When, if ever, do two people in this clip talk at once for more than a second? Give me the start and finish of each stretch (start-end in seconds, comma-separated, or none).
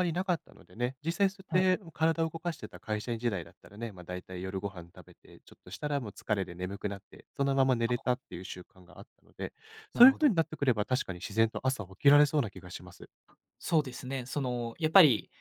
none